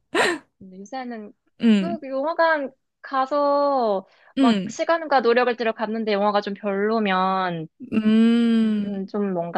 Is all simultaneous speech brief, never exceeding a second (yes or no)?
yes